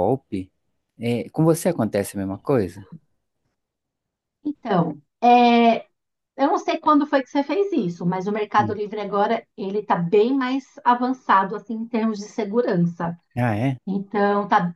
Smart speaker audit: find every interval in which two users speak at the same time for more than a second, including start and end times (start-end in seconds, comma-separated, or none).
none